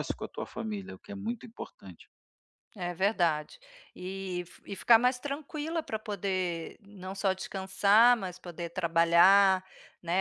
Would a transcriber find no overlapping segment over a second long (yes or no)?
yes